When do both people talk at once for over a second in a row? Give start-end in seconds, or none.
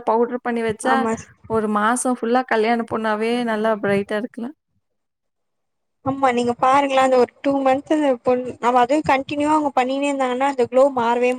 none